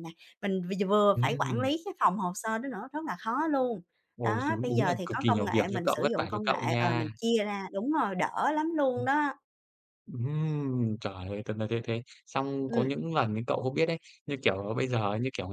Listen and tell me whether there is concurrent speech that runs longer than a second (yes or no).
yes